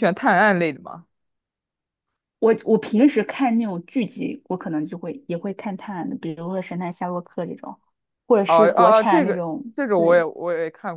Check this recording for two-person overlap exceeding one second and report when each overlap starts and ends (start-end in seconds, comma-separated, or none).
8.4-10.2